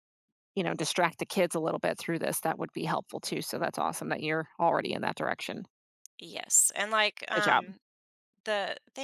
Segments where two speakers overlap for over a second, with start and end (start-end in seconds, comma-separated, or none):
none